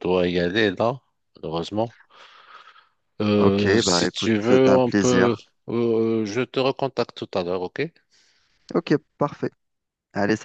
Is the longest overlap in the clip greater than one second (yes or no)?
yes